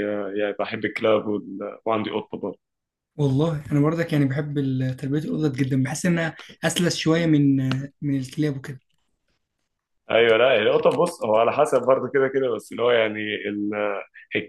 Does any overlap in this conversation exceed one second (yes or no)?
no